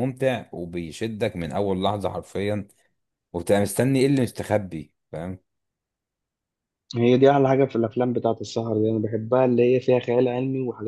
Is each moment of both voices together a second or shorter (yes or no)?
yes